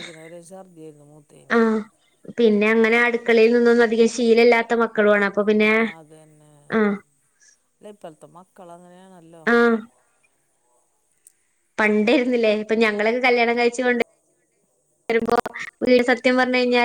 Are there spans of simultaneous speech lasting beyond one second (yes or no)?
no